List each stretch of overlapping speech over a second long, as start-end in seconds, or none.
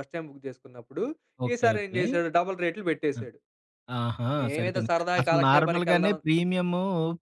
4.4-6.1